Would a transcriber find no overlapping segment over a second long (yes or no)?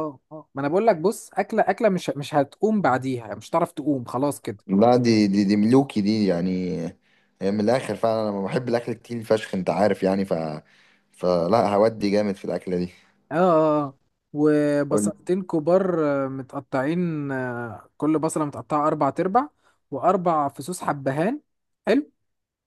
yes